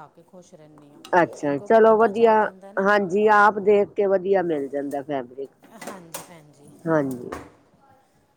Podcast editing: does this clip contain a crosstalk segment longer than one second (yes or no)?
no